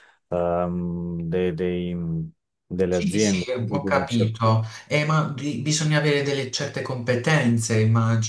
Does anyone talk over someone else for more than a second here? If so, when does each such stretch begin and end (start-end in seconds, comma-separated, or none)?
2.9-4.4